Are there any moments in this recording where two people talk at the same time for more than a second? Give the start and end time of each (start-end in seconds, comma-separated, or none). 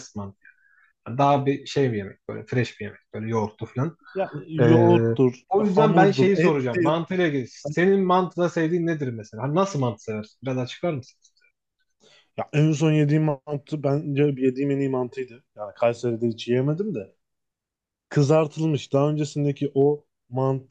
5.8-7.0